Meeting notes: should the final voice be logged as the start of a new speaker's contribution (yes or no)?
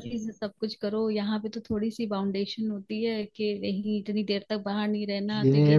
yes